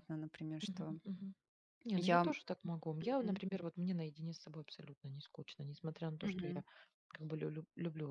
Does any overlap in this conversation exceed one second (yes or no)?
no